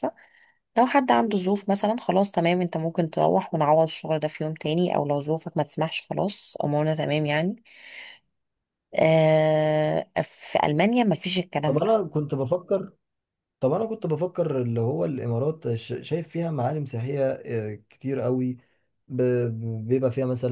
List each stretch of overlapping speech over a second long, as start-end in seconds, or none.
none